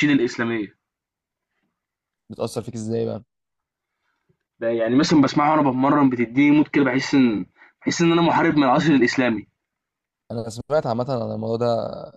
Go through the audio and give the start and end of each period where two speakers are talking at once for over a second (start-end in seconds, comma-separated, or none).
none